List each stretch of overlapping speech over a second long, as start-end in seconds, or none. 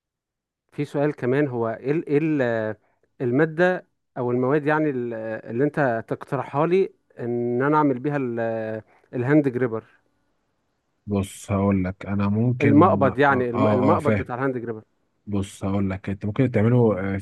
12.6-14.3